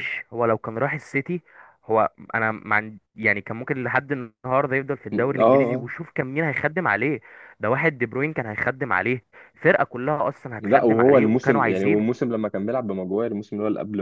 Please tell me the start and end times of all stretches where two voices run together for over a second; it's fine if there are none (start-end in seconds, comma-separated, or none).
10.6-12.1